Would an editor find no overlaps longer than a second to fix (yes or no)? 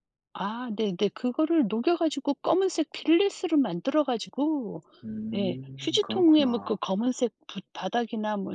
no